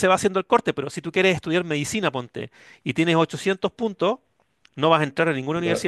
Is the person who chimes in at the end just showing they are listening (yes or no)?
yes